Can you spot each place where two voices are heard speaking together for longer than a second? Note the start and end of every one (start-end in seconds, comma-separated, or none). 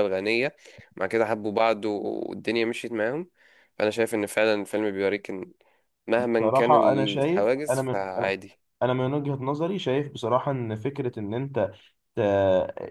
6.2-8.3